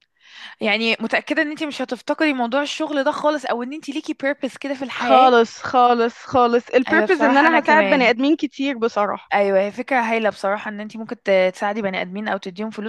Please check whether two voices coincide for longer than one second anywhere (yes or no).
yes